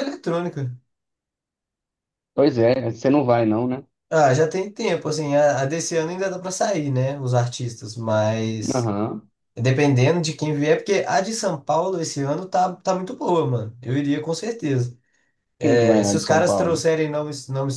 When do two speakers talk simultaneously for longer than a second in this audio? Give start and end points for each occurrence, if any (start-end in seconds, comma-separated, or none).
15.6-16.9